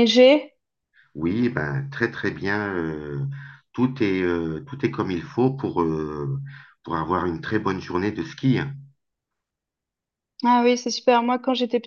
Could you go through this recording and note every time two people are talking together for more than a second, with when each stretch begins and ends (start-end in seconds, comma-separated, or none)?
none